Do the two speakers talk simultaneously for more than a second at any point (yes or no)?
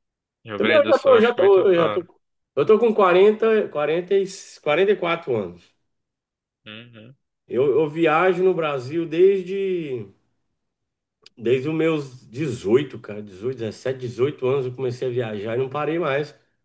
yes